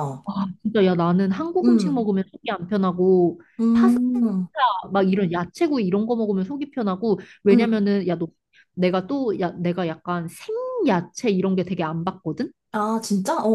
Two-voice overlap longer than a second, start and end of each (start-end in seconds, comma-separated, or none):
none